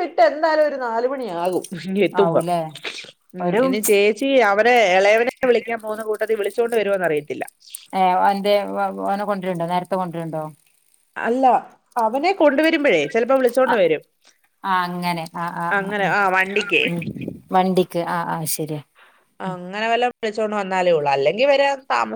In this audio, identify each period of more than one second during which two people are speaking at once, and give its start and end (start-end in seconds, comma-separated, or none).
none